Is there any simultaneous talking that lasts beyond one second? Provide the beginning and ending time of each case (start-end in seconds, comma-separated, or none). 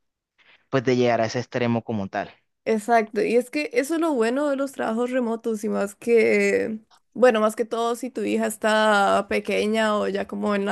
none